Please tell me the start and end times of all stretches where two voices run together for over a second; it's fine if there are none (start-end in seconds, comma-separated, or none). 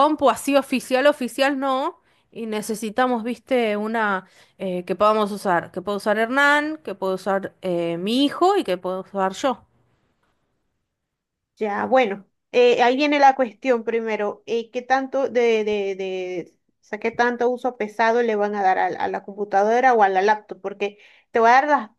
none